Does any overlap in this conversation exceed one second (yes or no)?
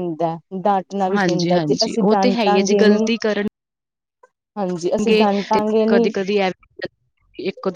yes